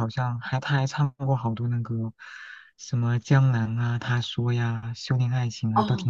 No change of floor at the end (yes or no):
no